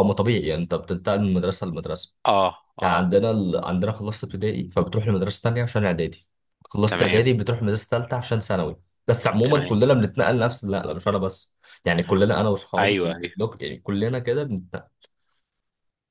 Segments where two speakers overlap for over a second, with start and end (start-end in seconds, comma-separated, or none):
none